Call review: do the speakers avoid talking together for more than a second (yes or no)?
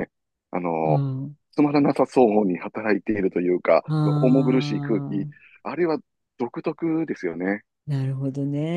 yes